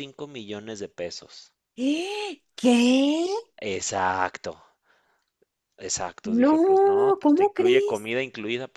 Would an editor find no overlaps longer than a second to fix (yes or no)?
no